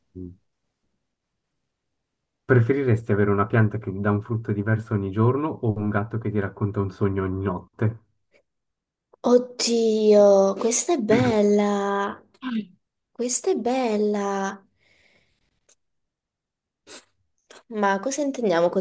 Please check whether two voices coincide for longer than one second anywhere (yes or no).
no